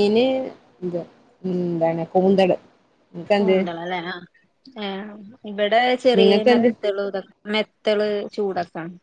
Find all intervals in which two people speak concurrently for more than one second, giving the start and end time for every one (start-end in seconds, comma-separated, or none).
none